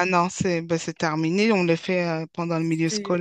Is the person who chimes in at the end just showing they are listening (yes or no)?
no